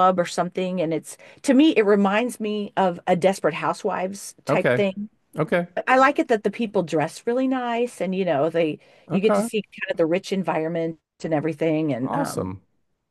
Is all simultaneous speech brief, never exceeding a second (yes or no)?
yes